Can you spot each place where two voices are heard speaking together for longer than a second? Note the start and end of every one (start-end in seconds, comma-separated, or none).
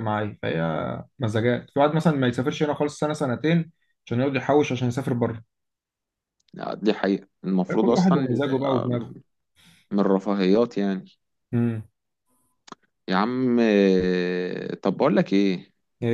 7.7-9.1